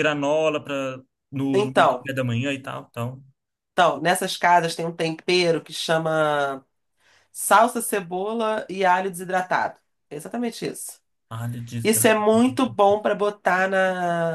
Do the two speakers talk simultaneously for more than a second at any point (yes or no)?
no